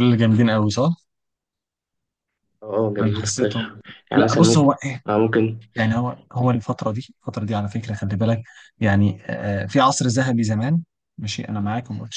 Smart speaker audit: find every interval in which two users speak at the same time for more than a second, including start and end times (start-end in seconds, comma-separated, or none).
3.0-4.7